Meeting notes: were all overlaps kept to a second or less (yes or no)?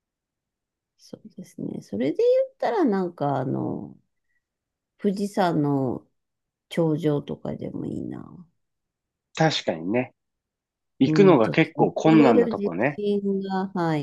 no